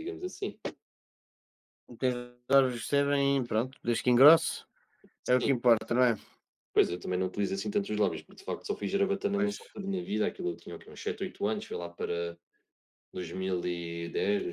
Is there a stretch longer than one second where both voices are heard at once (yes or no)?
no